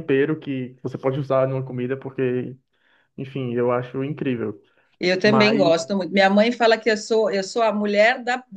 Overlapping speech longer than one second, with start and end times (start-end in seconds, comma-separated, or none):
none